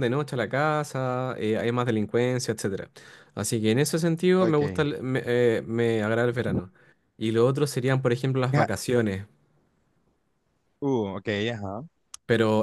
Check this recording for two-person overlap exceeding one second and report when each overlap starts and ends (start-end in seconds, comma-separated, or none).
none